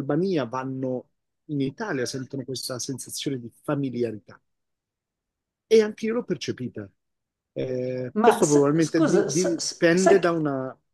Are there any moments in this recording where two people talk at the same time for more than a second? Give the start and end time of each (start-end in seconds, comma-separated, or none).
8.2-10.3